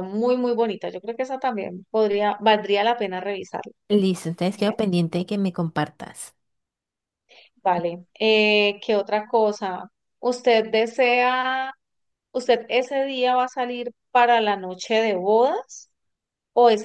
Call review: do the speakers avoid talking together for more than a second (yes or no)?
yes